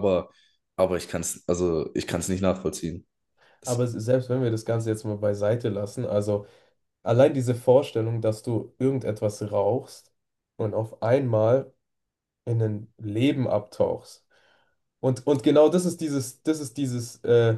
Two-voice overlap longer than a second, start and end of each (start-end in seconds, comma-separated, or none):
none